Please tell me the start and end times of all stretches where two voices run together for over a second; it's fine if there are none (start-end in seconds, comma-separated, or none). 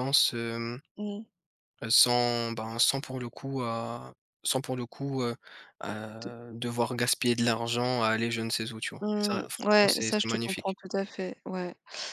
9.0-10.8